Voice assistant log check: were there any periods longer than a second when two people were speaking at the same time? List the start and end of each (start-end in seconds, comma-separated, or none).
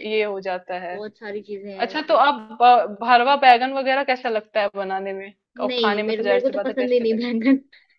5.7-7.2